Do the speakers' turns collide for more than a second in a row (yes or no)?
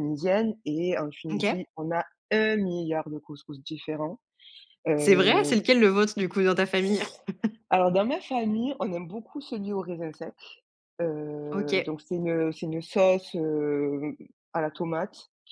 no